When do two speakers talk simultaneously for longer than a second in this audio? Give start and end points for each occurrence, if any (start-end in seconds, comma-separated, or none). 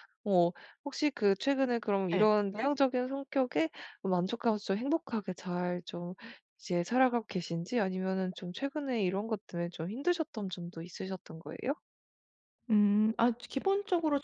none